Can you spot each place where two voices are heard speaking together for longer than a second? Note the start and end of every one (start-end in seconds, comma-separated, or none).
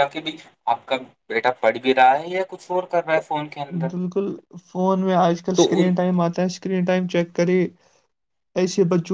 none